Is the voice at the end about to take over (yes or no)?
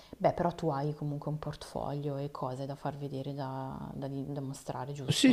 yes